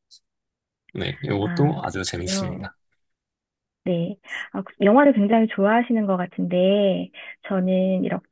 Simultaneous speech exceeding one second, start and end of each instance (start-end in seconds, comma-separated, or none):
1.4-2.7